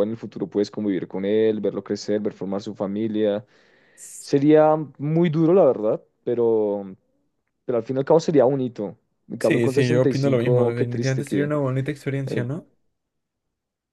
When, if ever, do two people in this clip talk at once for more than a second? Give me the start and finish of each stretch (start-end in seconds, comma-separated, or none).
9.4-11.5